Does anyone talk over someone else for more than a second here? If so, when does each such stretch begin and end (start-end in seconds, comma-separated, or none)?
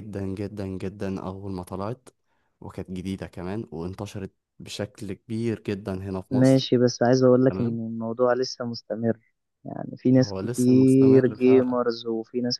10.2-11.8